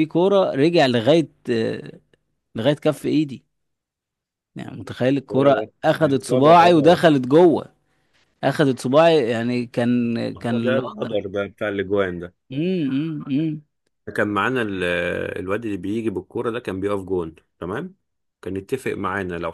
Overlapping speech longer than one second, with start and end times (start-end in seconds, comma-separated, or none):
5.3-7.0